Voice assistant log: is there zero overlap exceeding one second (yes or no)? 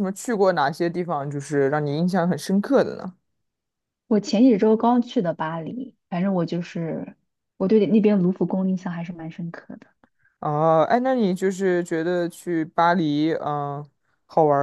yes